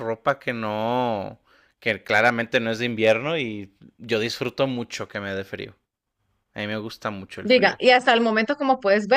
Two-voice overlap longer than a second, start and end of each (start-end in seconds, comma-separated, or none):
none